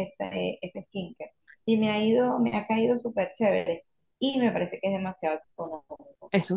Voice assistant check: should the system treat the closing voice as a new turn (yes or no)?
no